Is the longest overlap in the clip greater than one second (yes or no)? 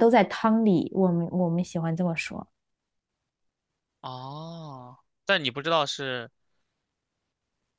no